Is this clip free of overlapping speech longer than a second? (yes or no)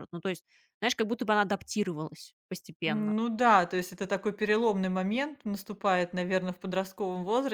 yes